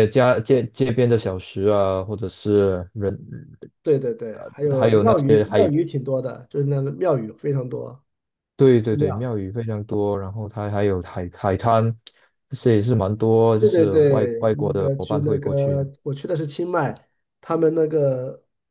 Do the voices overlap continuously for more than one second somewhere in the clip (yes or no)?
yes